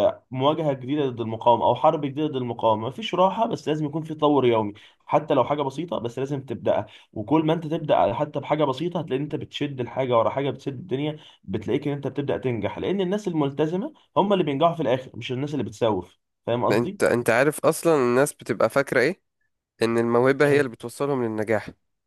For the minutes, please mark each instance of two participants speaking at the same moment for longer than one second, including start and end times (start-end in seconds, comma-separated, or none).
none